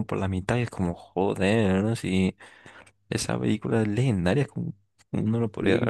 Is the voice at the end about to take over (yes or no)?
yes